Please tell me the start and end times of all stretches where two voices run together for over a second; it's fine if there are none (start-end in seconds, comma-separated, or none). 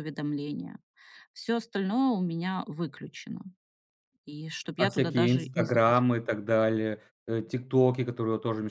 4.8-6.1